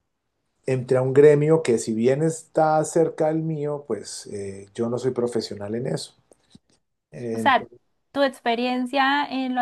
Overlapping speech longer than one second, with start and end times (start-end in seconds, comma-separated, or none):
none